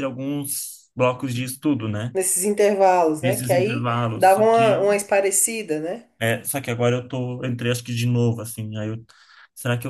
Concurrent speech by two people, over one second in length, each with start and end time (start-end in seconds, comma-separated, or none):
3.2-4.9